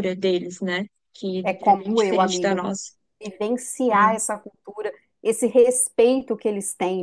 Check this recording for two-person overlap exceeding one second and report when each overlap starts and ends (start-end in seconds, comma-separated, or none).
1.4-2.8